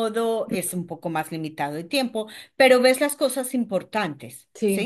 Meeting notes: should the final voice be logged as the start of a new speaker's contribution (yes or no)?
yes